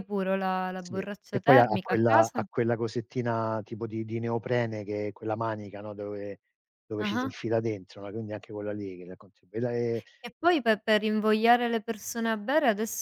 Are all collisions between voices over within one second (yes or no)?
no